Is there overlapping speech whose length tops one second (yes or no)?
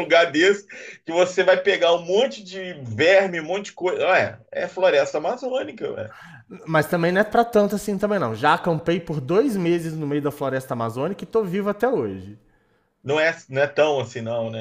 no